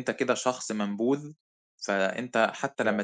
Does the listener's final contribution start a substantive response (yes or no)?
no